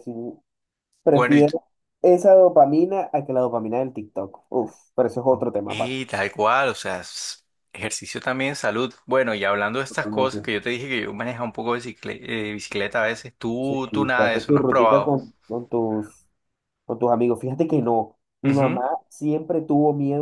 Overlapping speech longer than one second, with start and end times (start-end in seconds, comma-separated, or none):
13.6-15.2